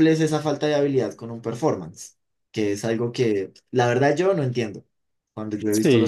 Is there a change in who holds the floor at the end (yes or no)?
no